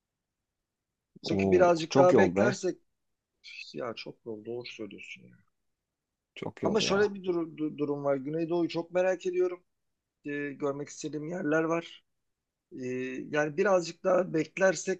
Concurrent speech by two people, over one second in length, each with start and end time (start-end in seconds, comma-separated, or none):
1.2-2.6